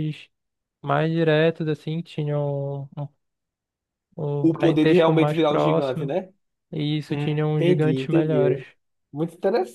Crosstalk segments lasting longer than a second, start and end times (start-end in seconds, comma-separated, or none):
4.4-6.1, 7.1-8.6